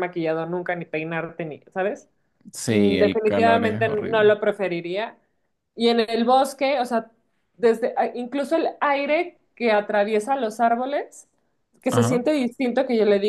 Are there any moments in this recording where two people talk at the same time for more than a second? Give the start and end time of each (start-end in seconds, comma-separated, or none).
2.7-4.3